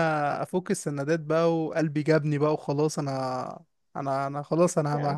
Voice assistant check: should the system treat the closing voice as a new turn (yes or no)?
no